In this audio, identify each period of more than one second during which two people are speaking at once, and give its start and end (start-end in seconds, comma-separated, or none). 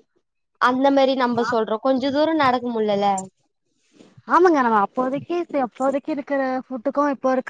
none